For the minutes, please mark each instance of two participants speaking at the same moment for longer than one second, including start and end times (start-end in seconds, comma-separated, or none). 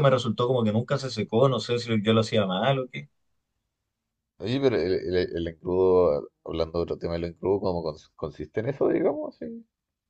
none